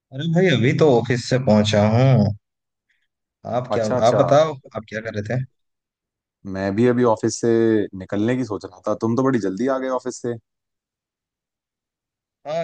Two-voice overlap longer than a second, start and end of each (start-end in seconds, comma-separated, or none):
none